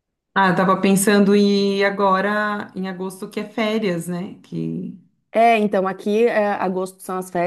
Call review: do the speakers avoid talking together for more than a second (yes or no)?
yes